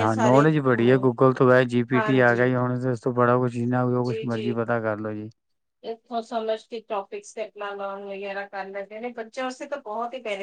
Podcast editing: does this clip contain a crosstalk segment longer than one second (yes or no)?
no